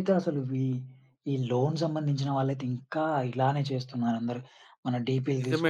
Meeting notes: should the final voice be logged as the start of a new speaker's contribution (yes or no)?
yes